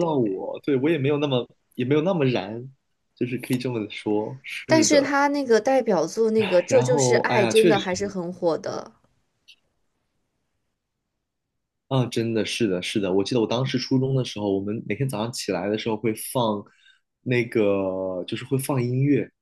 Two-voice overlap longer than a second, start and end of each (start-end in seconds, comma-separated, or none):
6.7-8.0